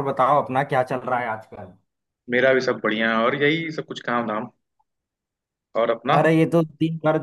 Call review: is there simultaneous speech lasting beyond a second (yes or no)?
no